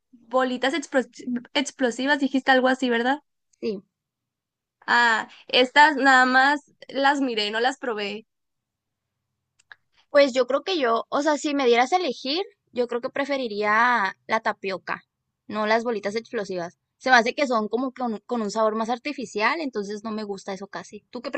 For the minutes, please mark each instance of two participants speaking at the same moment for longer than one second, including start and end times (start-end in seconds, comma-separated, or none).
none